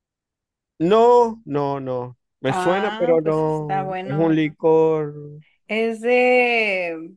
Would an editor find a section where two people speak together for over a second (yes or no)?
yes